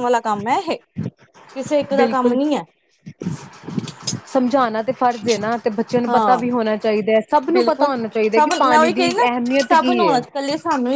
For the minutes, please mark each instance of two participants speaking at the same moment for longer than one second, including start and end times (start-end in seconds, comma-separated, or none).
none